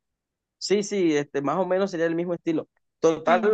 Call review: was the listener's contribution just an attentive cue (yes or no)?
yes